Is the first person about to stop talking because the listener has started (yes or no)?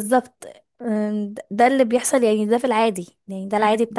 no